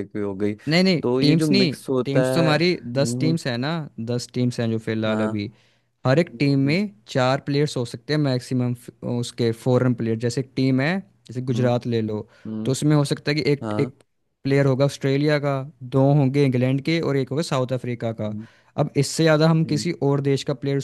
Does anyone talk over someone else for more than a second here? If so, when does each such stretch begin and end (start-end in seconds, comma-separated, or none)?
1.0-3.4